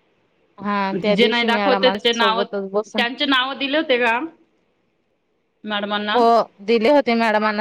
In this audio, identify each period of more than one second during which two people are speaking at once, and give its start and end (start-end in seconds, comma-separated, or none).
1.3-3.0